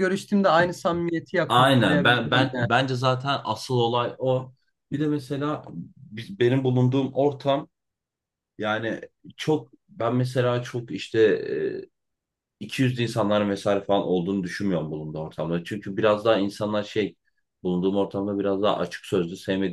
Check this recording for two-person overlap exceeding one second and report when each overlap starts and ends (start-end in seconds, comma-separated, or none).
1.5-2.7